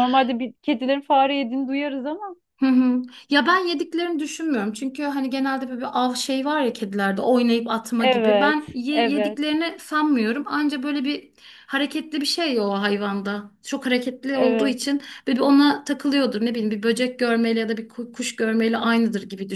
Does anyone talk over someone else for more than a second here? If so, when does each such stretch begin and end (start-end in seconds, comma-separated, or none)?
8.0-9.4